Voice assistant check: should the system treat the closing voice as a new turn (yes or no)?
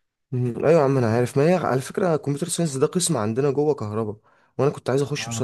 no